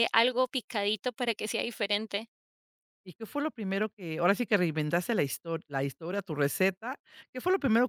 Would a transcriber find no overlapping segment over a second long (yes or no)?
yes